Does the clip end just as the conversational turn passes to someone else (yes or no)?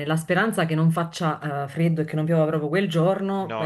no